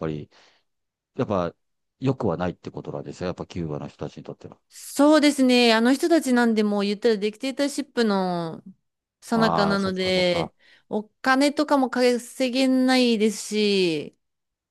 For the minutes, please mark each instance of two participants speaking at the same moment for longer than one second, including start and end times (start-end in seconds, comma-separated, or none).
9.3-10.5